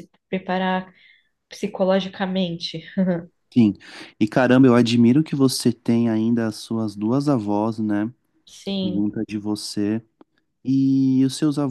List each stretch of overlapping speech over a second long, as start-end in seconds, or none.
none